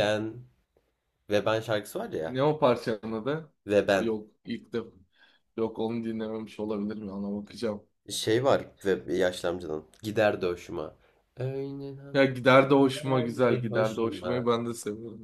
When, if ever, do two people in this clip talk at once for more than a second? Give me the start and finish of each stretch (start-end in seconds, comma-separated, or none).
12.8-14.5